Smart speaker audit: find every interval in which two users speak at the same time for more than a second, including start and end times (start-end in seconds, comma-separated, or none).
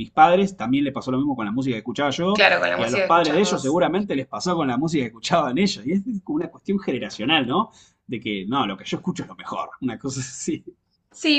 2.3-3.8